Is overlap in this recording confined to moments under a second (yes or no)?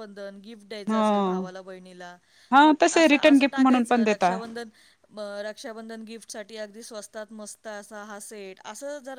no